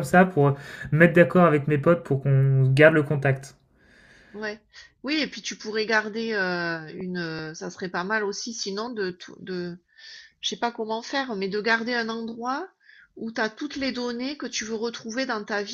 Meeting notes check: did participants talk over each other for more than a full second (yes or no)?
no